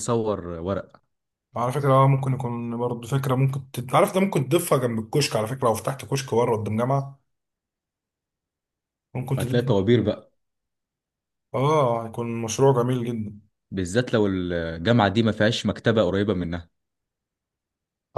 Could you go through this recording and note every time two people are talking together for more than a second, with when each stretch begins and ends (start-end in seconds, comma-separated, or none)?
none